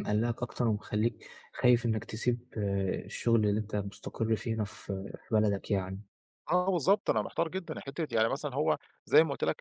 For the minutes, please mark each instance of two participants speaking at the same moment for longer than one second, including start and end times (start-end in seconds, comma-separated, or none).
none